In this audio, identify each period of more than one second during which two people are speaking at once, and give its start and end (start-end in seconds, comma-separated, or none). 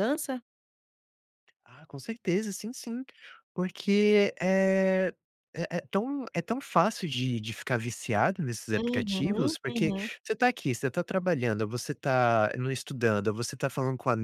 8.8-10.1